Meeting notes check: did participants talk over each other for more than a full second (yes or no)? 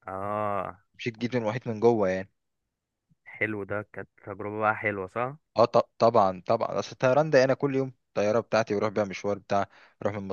no